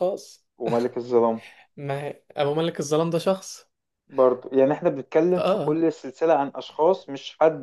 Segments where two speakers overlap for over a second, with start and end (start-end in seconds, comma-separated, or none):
none